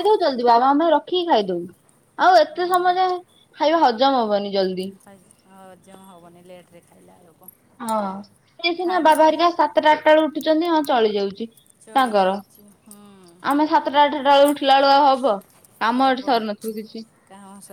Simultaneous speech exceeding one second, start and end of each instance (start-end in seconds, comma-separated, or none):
none